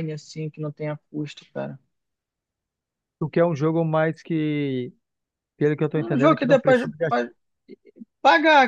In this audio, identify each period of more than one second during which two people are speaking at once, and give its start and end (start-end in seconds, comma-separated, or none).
5.9-7.2